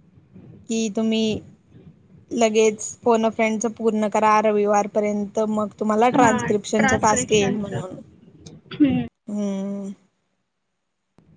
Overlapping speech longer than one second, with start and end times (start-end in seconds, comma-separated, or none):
6.2-8.0